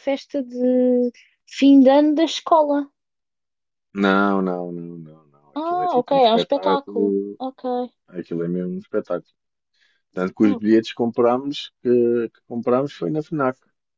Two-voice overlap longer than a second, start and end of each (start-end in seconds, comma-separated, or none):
5.5-7.4